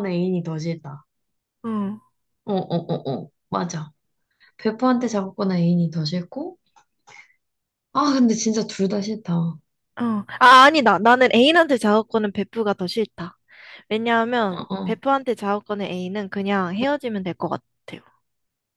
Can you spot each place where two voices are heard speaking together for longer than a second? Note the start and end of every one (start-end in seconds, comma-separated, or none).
none